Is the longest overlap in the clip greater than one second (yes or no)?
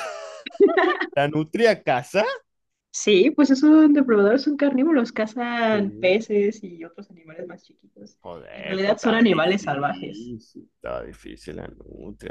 yes